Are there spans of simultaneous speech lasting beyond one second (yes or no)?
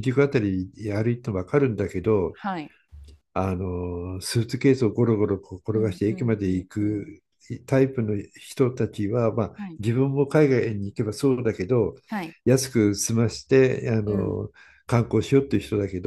yes